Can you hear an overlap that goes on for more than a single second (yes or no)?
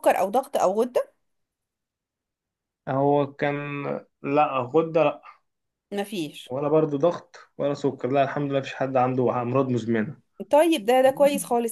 no